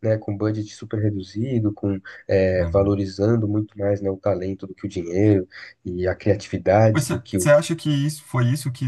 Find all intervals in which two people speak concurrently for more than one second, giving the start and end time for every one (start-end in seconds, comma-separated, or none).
none